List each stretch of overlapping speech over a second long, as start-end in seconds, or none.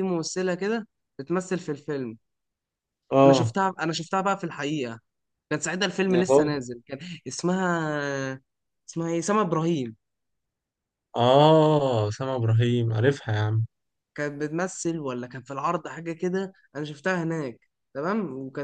none